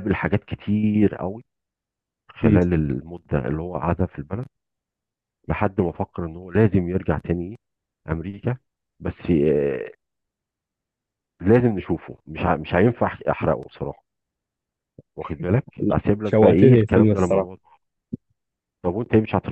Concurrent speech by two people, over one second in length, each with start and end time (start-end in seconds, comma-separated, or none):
15.8-17.6